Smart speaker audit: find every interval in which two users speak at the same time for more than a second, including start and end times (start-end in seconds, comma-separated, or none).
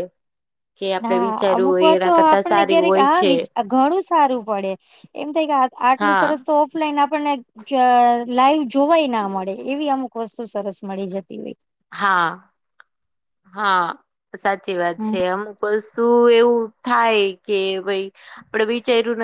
1.0-3.3